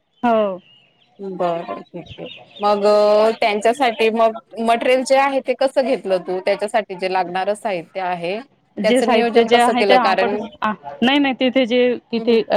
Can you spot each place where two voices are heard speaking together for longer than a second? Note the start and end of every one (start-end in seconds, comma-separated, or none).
8.9-10.4